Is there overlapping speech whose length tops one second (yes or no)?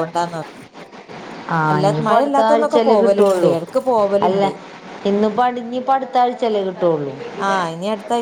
yes